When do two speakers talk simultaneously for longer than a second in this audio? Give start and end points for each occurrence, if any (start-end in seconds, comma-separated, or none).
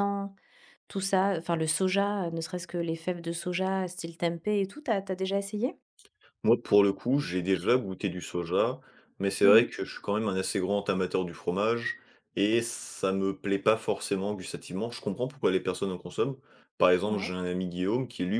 none